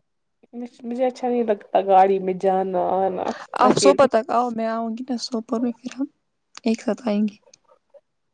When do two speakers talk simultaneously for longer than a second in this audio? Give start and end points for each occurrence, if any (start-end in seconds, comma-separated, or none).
none